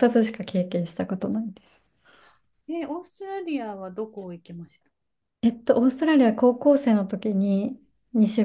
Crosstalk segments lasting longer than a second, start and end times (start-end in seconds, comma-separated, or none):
none